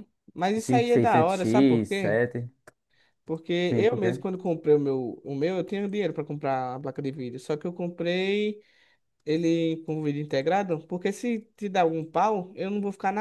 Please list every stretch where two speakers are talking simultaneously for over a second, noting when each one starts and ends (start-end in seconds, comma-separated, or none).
0.6-2.2